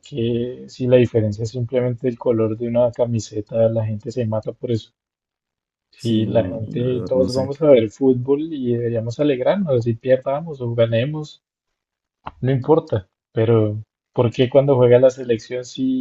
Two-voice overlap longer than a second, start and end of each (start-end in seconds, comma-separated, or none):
6.0-7.5